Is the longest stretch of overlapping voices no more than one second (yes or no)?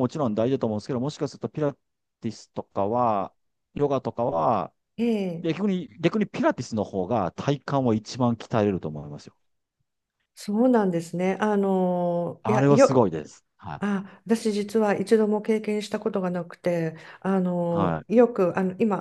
yes